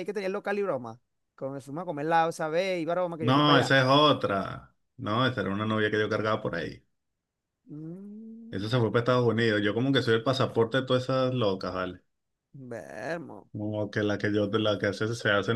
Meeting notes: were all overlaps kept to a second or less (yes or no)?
yes